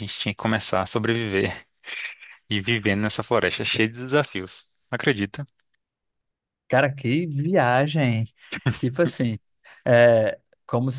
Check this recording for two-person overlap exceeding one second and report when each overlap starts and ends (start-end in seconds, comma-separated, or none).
none